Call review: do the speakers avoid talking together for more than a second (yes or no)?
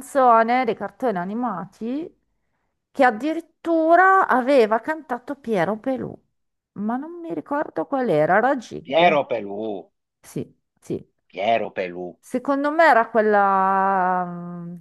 yes